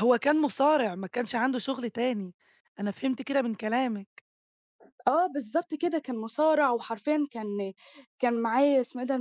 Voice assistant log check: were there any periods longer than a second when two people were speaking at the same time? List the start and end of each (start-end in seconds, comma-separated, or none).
none